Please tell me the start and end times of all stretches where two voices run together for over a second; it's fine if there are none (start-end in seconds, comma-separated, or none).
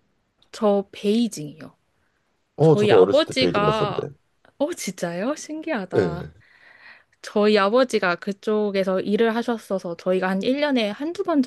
2.6-4.1